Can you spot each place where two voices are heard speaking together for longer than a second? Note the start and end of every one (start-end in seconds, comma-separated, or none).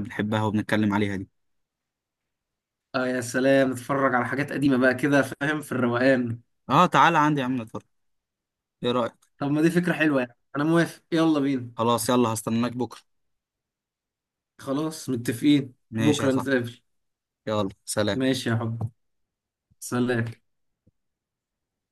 none